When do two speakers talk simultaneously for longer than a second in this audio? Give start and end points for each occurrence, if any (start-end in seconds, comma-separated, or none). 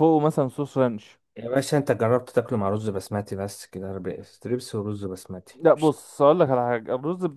none